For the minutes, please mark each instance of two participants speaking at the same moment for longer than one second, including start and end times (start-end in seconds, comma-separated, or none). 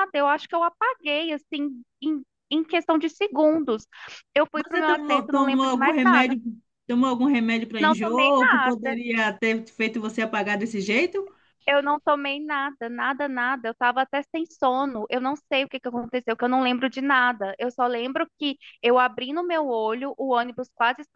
4.5-6.4, 7.8-9.0